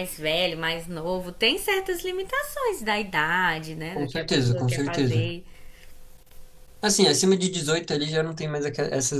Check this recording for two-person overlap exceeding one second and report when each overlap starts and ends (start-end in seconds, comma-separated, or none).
3.9-5.3